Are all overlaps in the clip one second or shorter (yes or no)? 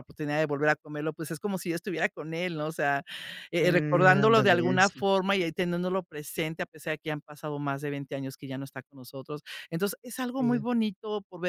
no